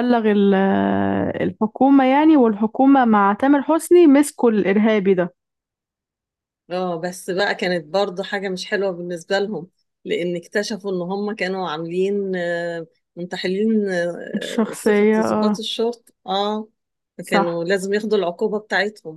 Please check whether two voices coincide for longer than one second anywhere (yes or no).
yes